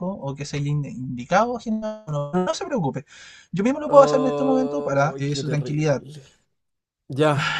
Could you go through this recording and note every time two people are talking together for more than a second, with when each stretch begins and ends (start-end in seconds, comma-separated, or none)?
3.9-6.0